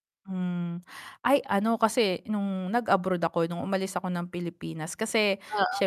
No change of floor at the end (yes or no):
yes